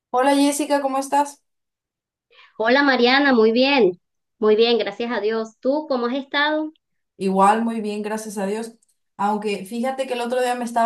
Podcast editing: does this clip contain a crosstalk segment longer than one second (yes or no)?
no